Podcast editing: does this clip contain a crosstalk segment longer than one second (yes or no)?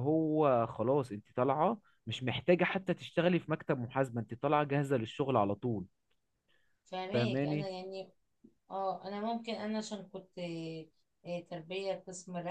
no